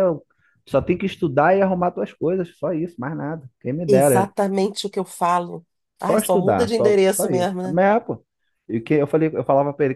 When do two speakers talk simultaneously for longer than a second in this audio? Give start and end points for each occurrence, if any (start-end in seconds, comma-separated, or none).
6.0-7.8